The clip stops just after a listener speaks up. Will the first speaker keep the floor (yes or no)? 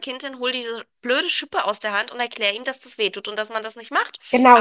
no